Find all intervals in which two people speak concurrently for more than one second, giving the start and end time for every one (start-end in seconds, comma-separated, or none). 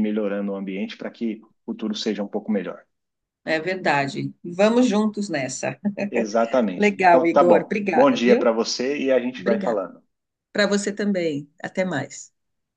6.8-8.5